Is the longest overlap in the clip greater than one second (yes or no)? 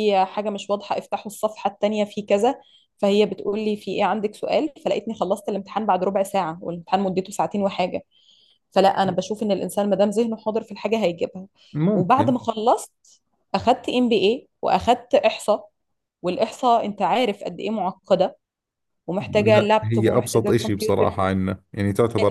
yes